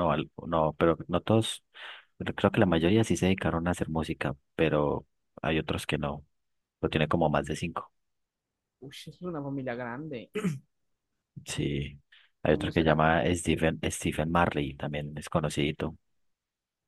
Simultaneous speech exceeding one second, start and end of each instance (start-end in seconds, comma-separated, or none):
none